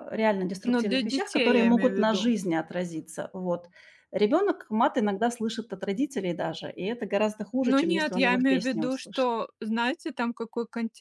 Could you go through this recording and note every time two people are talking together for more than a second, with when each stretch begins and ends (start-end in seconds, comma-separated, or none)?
0.6-2.3, 7.7-9.3